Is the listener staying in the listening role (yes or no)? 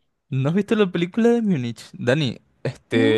yes